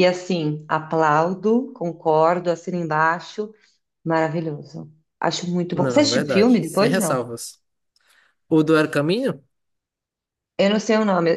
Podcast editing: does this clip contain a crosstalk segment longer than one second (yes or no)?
yes